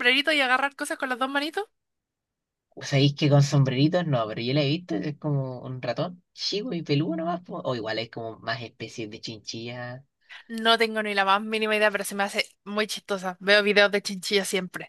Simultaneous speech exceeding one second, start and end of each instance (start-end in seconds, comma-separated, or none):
none